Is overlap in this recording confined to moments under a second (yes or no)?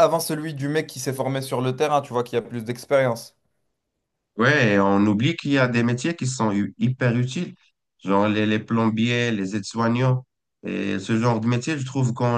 yes